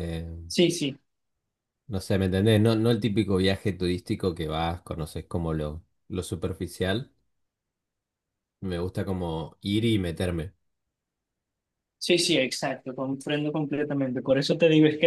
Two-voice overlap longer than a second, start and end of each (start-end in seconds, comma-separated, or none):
none